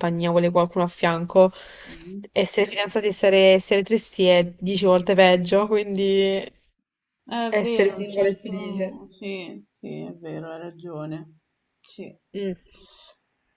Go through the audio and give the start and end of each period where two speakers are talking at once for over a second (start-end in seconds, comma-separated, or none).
7.5-9.0